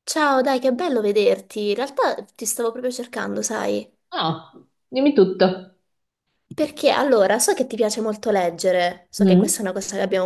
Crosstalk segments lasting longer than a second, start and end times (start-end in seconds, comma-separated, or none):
none